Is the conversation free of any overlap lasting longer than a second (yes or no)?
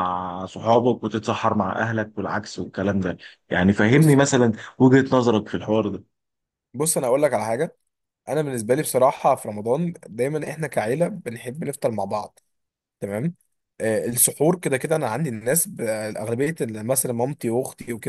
yes